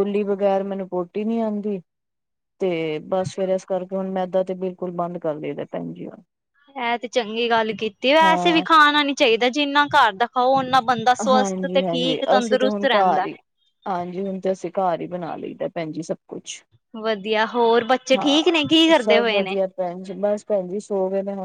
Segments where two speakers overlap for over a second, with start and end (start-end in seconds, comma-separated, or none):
11.3-13.3, 18.2-19.5